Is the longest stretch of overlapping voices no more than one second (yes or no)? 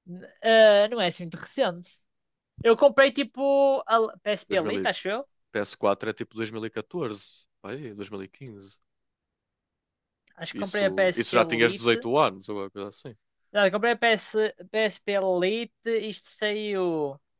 no